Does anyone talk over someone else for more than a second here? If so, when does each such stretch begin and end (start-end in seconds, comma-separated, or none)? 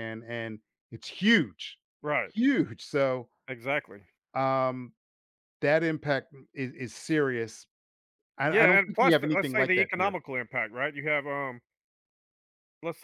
8.5-10.2